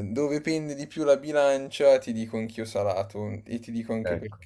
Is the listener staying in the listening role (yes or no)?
yes